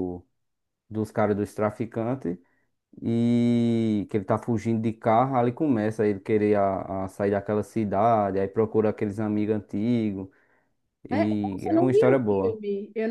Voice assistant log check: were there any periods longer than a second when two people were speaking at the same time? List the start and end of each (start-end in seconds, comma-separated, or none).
11.1-12.6